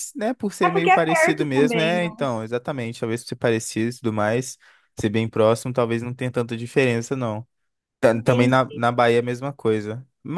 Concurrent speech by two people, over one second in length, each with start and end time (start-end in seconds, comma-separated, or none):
0.6-2.1